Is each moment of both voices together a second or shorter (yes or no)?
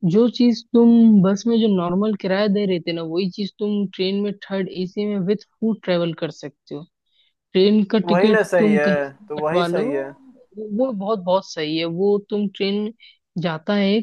no